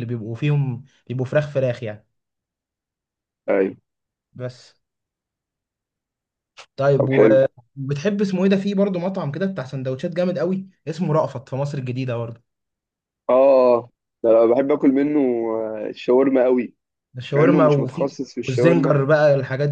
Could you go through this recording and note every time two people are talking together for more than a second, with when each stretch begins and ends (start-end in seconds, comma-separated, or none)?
17.3-18.9